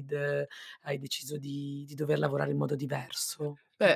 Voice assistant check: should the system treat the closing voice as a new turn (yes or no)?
yes